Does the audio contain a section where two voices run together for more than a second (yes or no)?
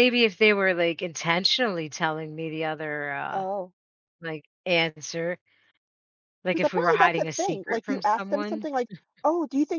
yes